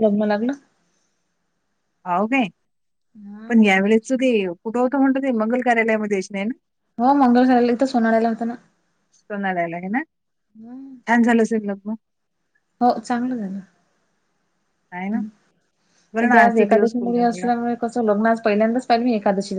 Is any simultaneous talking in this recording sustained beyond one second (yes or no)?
yes